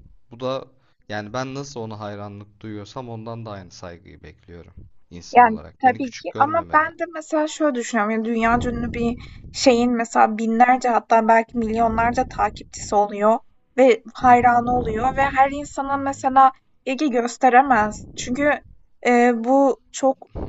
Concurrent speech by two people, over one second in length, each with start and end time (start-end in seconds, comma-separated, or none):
5.3-6.9